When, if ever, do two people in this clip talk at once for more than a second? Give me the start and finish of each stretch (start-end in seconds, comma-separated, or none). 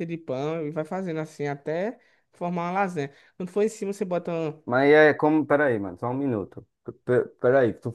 none